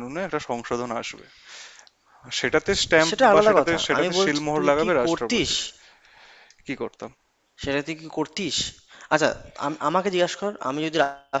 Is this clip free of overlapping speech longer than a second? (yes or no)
no